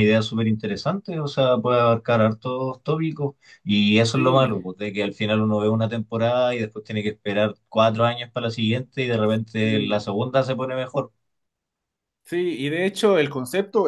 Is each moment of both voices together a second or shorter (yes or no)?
yes